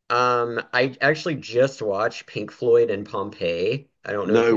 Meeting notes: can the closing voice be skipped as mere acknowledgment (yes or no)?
yes